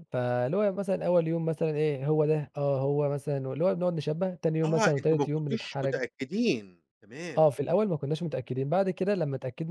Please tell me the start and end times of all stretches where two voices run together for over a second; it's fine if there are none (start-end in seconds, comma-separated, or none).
4.7-6.0